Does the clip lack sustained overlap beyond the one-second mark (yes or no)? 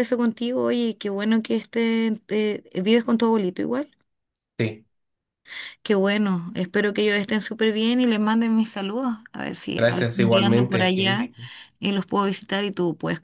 no